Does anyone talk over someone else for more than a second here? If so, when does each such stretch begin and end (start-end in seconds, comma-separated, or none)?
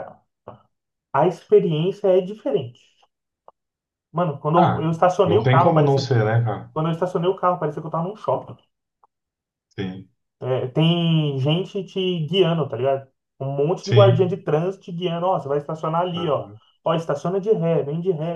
4.5-6.1